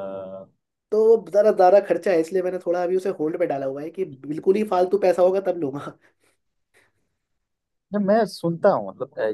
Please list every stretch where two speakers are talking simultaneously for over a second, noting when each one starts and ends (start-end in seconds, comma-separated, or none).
none